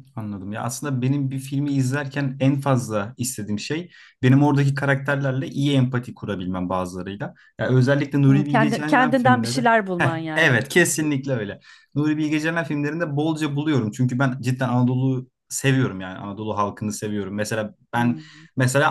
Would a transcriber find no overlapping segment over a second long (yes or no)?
no